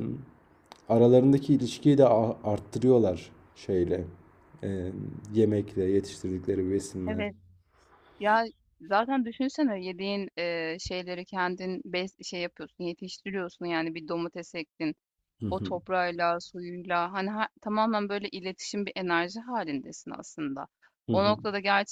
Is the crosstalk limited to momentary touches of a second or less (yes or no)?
yes